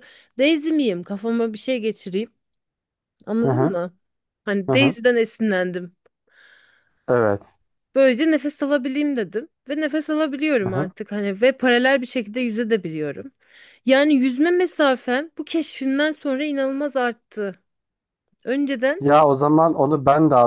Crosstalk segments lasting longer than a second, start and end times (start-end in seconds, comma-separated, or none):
none